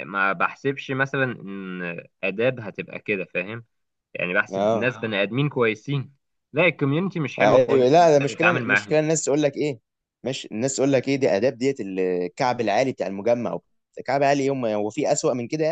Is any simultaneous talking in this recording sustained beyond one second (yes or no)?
yes